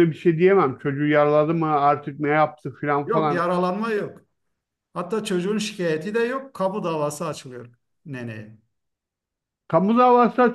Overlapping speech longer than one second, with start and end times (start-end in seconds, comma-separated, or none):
none